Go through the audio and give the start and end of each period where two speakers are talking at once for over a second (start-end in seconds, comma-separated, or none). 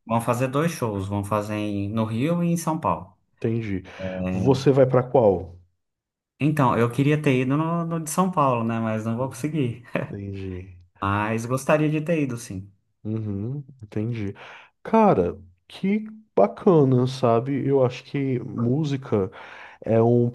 none